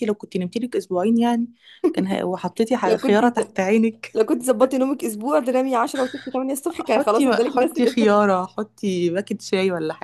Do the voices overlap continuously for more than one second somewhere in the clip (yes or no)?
yes